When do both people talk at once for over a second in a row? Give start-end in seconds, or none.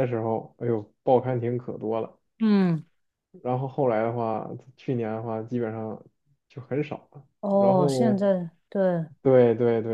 none